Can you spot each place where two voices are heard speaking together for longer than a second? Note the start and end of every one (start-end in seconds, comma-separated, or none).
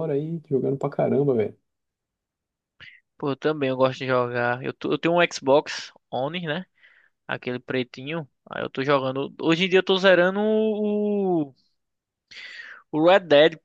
none